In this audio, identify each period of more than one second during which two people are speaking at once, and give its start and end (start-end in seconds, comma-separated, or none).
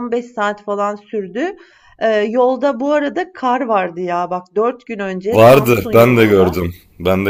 5.3-6.6